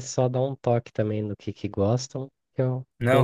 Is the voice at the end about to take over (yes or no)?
yes